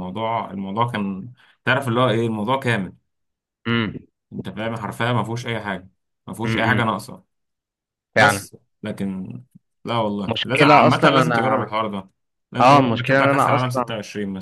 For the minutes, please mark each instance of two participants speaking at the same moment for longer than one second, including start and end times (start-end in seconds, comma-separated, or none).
10.3-11.7, 12.6-13.8